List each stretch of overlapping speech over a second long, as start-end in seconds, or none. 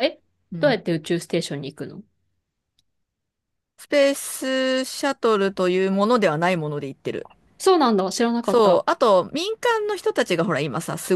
none